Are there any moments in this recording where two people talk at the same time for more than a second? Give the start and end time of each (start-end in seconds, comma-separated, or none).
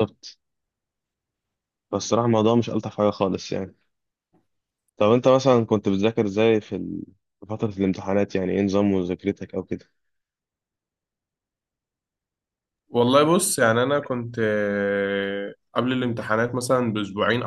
none